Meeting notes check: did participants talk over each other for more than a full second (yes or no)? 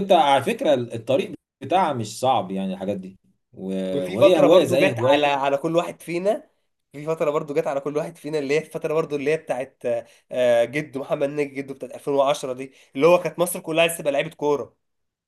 yes